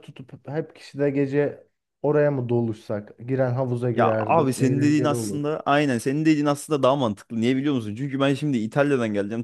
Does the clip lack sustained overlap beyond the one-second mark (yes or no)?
no